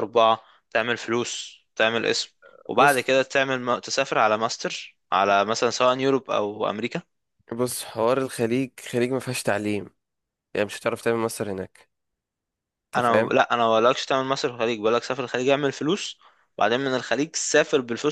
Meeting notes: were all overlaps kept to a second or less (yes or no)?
yes